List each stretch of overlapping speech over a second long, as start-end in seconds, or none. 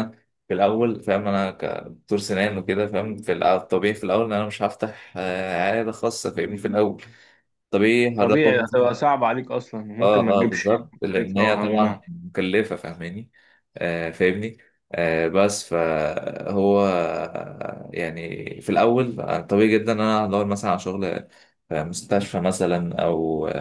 10.0-12.0